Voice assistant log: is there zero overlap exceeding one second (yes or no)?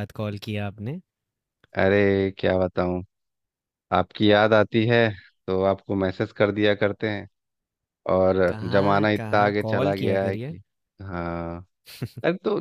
no